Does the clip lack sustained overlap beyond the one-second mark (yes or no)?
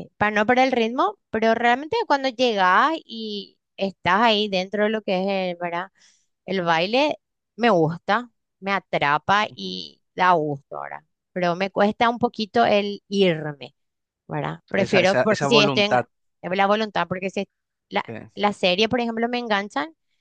no